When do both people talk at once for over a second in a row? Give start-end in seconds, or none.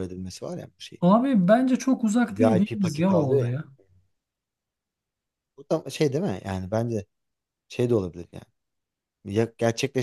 2.3-3.5